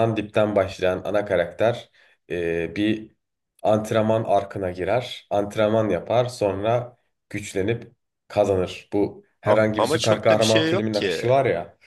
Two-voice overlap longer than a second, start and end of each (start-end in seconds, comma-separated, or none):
9.4-11.3